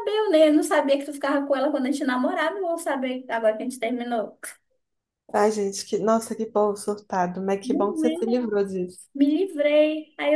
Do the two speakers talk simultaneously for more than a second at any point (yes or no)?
no